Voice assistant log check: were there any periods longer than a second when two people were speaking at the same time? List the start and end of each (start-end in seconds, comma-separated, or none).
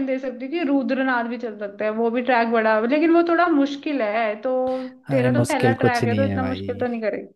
5.1-6.9